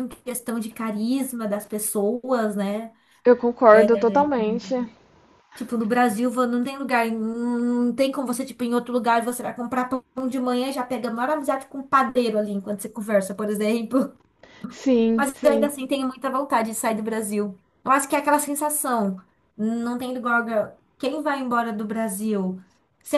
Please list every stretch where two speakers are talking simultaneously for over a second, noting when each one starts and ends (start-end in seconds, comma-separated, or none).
none